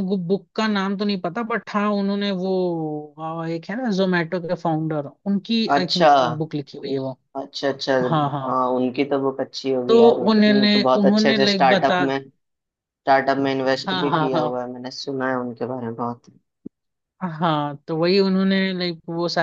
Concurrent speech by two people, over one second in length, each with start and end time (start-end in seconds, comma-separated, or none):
9.9-12.0